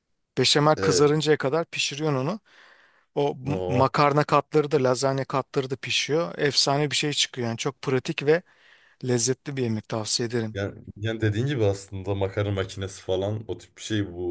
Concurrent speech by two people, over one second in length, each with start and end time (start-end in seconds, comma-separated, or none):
none